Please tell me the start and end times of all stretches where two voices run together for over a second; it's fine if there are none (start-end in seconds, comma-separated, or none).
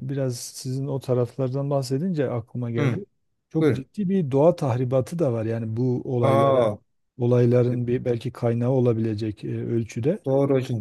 none